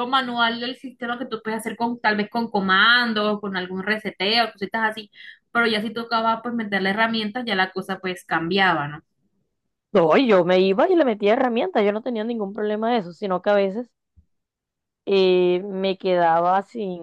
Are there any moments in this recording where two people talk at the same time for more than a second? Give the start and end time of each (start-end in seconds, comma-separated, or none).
none